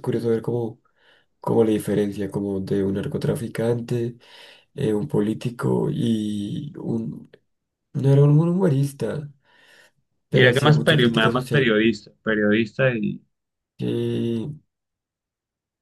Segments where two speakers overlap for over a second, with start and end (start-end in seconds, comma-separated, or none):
10.3-11.7